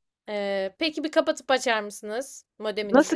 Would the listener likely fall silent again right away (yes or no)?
no